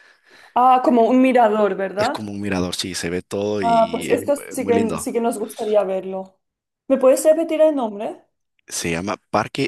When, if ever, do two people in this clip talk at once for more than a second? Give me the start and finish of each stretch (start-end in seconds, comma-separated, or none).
3.6-5.1